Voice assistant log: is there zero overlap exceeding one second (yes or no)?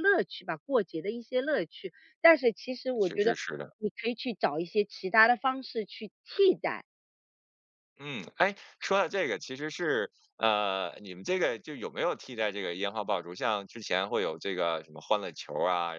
yes